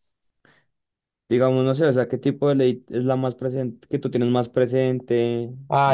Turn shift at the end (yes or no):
yes